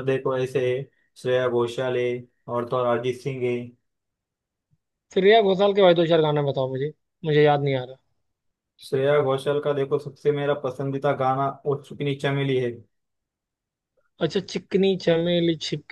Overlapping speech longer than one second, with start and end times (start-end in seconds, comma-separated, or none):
none